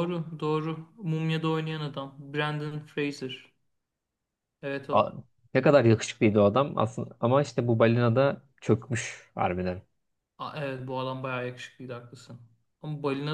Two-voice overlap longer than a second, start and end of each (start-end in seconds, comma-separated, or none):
none